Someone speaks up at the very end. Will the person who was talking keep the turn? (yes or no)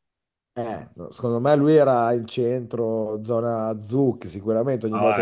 no